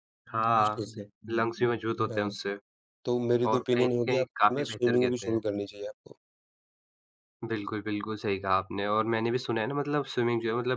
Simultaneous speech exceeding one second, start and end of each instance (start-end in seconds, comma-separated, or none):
3.5-5.4